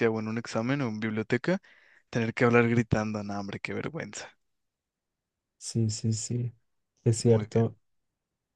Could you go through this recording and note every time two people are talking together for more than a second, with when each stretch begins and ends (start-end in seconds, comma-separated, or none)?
none